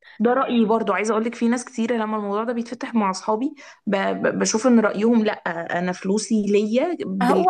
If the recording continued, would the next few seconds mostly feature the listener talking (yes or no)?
yes